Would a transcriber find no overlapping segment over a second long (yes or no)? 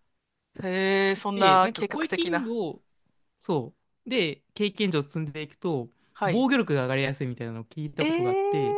no